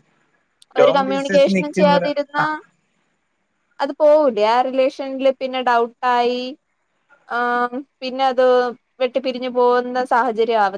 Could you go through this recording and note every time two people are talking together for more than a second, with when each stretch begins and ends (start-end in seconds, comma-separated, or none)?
0.8-2.4